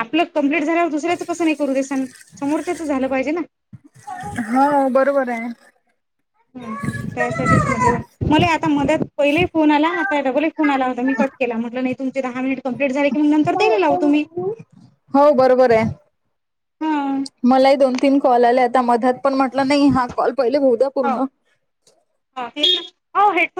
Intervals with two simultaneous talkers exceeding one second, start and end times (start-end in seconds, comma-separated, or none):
none